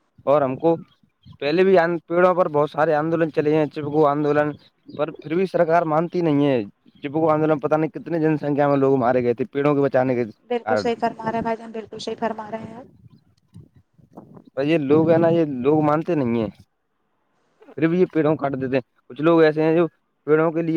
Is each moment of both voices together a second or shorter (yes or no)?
yes